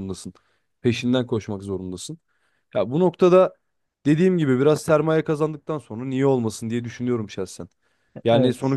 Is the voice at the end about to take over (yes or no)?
no